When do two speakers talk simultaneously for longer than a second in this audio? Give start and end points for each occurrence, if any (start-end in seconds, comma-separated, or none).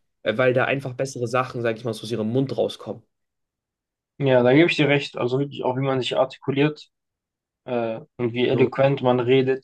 none